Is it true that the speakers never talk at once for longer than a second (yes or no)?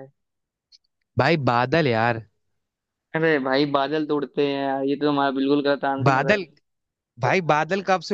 yes